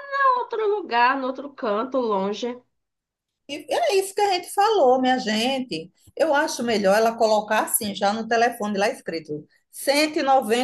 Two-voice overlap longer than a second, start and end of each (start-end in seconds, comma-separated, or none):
none